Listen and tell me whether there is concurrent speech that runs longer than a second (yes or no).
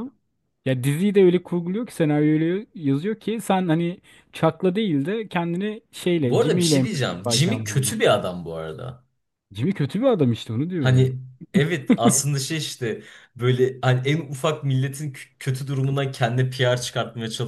yes